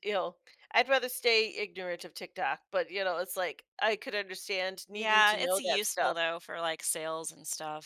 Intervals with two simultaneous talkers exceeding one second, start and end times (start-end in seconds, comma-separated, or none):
4.9-6.2